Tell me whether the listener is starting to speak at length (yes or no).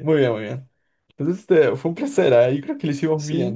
yes